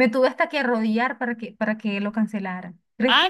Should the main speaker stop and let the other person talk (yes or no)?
yes